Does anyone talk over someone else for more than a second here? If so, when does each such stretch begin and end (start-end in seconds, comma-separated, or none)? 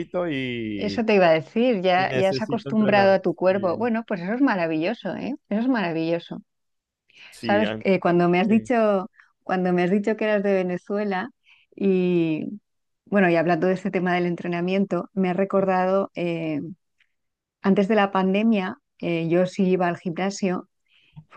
1.9-3.9